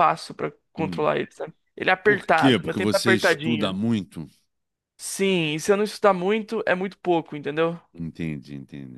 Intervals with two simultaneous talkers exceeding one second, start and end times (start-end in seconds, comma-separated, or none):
2.0-3.8